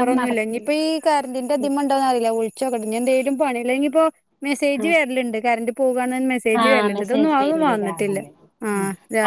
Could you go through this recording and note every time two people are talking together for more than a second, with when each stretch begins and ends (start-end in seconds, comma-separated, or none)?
6.6-8.2